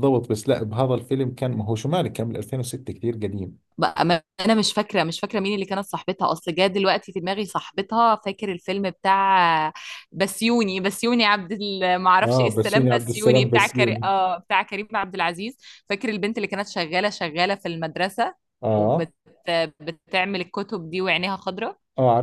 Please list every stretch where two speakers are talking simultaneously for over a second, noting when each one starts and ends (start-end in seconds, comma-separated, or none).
12.2-14.1